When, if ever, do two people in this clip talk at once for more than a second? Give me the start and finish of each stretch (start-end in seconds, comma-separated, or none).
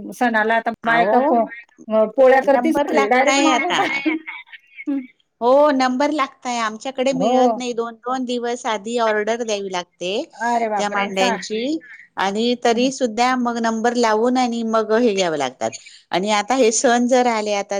2.5-3.8